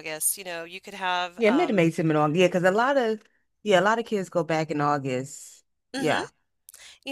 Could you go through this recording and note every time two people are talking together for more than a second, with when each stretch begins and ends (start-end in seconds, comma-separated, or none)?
none